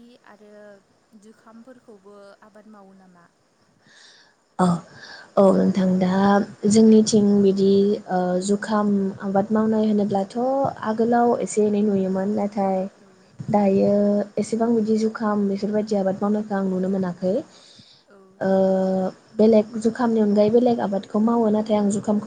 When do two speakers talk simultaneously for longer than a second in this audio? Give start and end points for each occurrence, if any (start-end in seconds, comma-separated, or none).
none